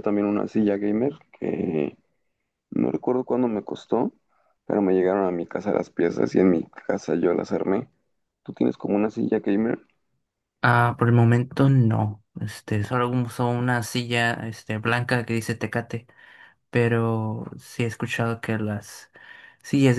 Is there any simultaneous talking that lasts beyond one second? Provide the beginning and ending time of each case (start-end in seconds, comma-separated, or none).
none